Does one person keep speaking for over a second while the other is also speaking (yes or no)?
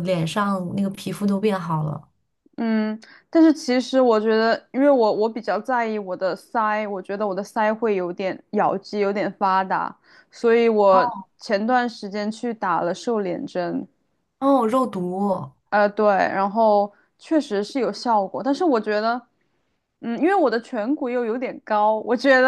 no